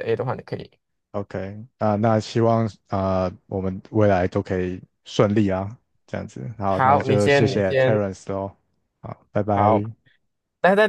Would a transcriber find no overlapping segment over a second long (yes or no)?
no